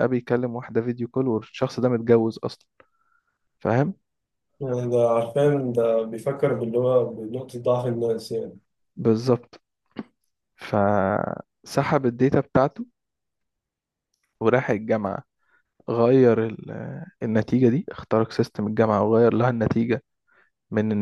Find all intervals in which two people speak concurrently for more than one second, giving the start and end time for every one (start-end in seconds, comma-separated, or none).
none